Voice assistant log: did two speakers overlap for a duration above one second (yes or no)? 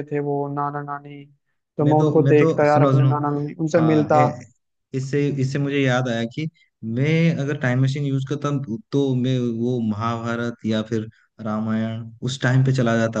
yes